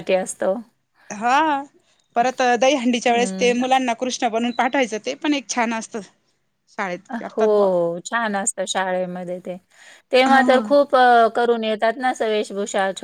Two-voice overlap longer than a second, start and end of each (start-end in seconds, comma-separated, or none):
none